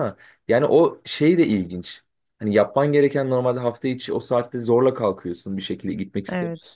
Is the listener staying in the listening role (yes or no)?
yes